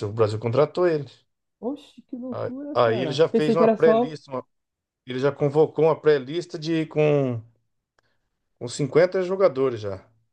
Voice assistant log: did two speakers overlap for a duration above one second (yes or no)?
yes